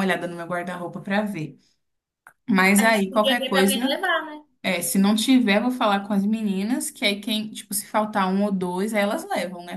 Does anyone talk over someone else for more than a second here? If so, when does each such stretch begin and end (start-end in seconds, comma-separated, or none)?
2.8-4.0